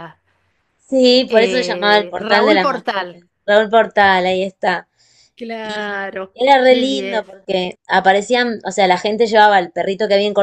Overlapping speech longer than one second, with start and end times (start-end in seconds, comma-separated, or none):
1.3-3.1, 5.6-7.2